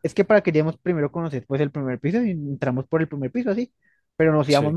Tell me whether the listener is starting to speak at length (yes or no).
no